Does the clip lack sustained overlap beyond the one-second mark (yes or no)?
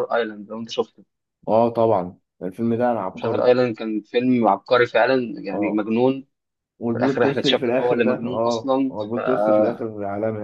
no